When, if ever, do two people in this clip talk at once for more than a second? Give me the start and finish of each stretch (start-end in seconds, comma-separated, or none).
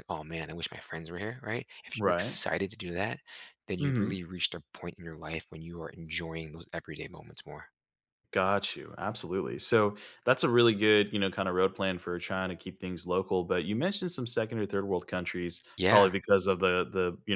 none